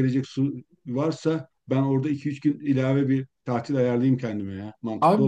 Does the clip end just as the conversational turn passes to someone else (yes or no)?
yes